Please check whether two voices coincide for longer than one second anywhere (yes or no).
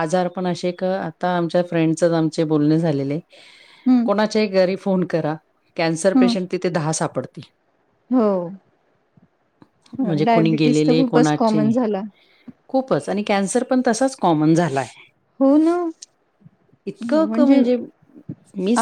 yes